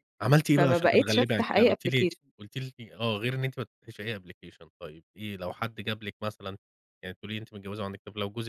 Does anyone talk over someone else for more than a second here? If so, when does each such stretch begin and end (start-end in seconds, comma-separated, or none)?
0.6-2.2